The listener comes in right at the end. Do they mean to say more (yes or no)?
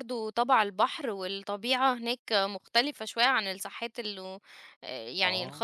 no